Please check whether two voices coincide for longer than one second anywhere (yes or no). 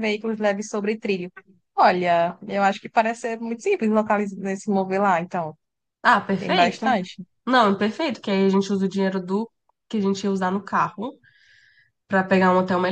no